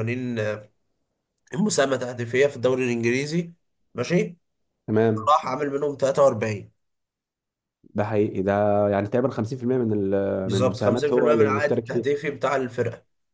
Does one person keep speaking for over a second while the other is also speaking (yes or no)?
yes